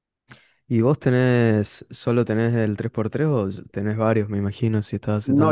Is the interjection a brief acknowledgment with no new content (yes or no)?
no